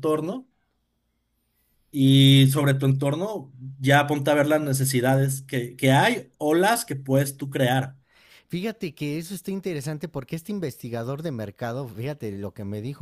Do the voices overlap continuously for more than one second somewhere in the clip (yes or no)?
no